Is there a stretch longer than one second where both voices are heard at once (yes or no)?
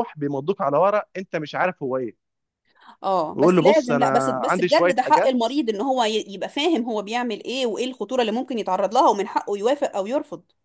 yes